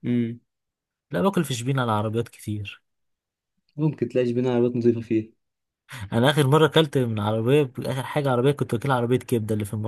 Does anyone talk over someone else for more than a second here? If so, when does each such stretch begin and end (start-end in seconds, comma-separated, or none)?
none